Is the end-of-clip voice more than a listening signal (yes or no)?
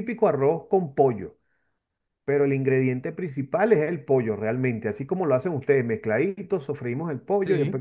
no